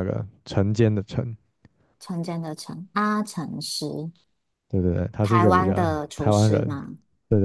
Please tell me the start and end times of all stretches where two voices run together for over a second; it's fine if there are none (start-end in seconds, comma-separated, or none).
5.2-6.7